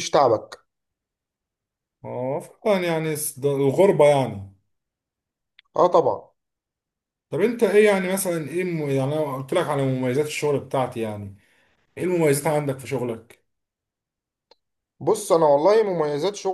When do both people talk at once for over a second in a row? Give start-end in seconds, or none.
none